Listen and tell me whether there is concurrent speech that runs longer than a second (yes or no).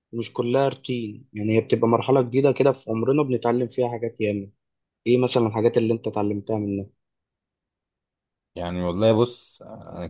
no